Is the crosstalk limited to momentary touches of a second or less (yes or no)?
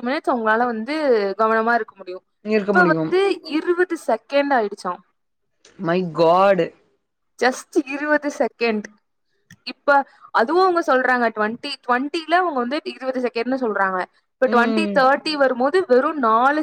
yes